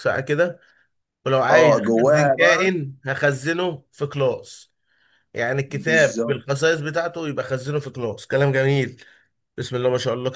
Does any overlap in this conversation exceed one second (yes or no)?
yes